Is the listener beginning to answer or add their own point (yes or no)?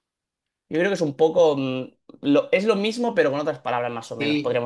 yes